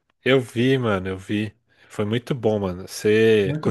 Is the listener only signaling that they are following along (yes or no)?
no